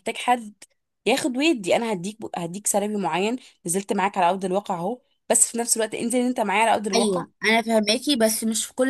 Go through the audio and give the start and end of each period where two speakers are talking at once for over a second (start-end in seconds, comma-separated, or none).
none